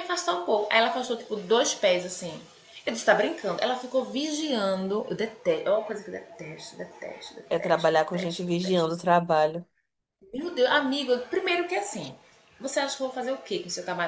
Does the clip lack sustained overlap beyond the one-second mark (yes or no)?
no